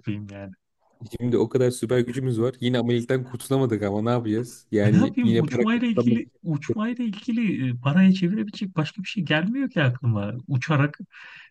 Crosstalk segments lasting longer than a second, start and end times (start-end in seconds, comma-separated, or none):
4.8-7.0